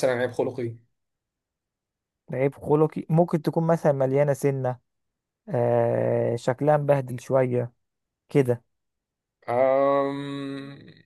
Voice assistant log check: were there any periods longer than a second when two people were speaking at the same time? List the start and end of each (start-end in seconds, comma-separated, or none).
none